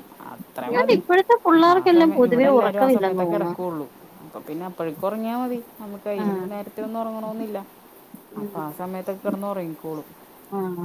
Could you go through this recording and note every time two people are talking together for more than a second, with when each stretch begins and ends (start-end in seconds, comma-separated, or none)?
1.7-3.5